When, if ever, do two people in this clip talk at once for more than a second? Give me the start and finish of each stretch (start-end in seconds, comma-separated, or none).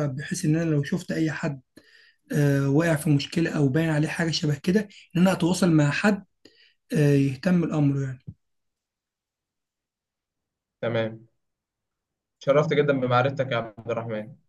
none